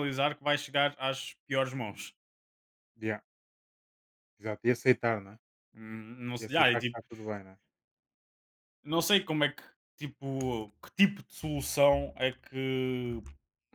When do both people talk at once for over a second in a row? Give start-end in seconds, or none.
none